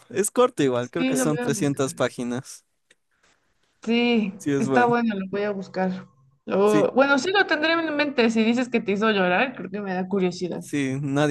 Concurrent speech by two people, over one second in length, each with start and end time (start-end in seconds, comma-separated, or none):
0.8-2.0